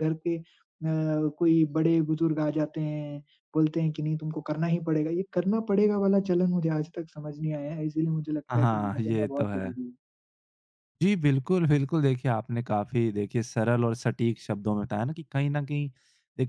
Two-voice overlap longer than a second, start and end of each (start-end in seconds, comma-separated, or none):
8.5-9.8